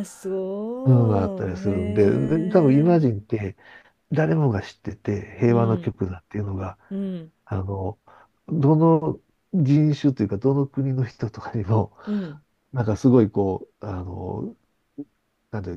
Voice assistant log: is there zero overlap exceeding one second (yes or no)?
no